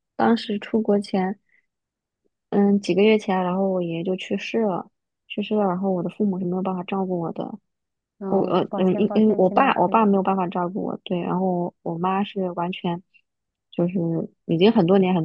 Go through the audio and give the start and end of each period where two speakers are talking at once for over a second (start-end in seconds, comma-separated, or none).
8.3-10.0